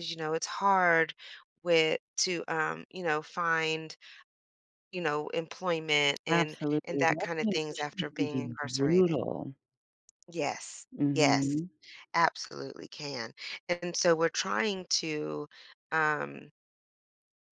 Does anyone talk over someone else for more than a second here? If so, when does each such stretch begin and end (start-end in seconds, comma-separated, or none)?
6.3-9.2